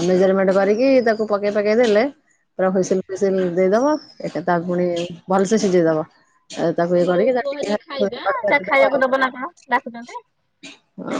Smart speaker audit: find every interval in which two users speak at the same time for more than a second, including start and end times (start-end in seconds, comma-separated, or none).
7.1-9.2